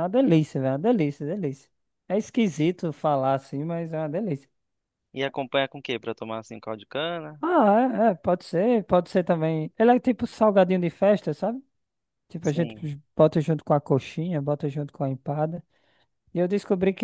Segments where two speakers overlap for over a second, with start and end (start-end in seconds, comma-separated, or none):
none